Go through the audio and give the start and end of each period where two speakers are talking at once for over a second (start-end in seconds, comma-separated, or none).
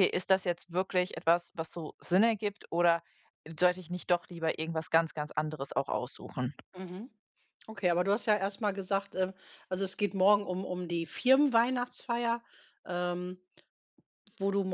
none